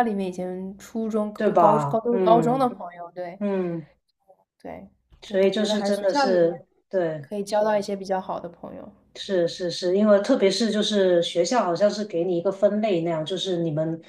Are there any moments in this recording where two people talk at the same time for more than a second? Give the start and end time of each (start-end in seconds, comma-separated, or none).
1.4-2.7, 5.2-6.5